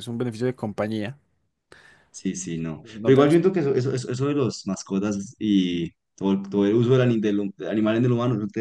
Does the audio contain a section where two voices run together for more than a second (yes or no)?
no